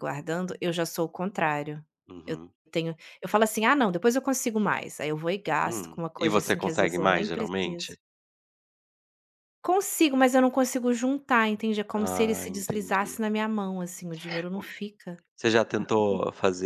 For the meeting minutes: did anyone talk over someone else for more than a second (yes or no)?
yes